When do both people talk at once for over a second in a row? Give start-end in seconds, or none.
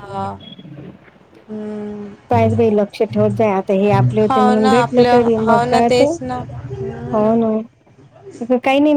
4.3-6.1